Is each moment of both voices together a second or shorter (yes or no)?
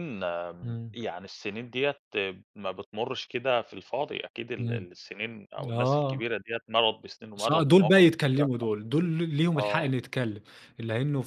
no